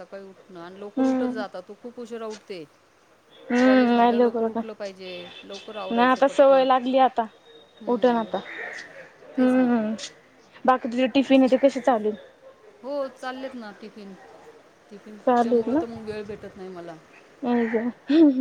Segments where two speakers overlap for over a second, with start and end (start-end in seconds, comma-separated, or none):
3.6-4.8